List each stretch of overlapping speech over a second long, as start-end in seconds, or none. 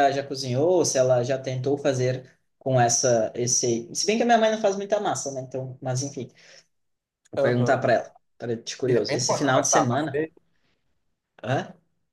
8.9-10.2